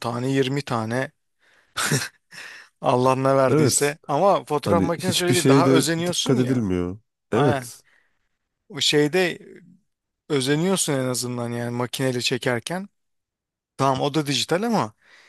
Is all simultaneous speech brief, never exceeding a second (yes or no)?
no